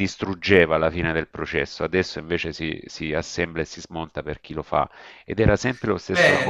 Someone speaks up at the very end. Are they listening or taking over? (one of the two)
taking over